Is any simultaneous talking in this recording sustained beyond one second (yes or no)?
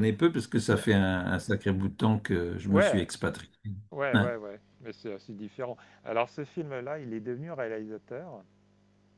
no